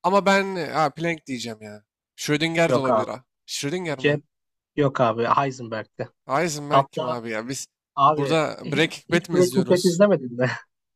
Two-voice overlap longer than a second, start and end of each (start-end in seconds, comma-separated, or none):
8.2-10.0